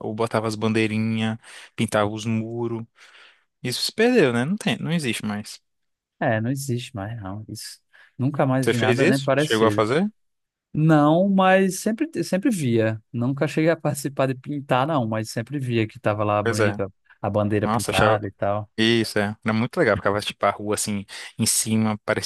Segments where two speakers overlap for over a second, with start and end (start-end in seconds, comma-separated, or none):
8.6-9.9